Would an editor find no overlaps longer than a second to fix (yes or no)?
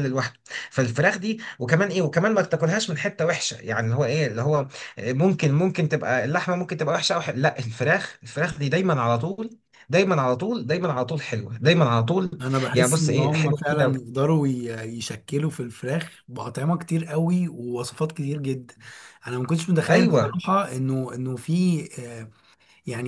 no